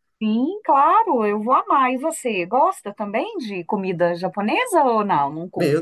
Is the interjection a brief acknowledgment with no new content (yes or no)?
no